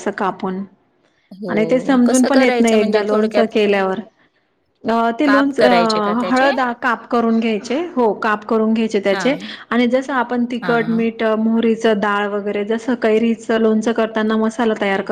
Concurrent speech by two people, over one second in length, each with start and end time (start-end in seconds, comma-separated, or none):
1.5-3.5, 5.2-6.5